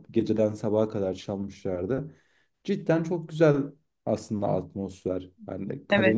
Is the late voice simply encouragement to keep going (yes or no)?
yes